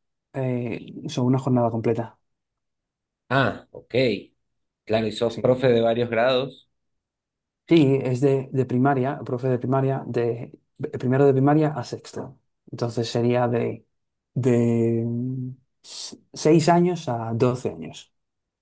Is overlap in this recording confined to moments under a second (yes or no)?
yes